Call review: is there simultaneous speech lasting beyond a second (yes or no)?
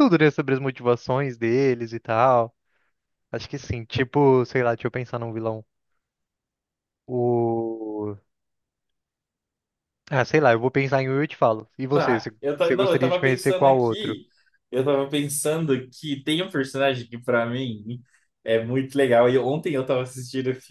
yes